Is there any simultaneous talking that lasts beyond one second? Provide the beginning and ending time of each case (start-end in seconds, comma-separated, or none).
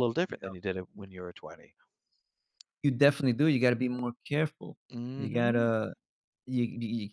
none